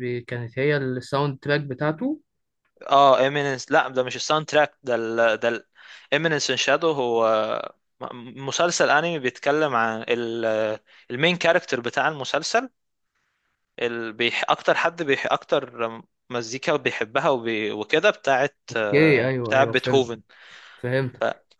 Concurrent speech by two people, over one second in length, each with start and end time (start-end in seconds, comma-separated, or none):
18.7-20.1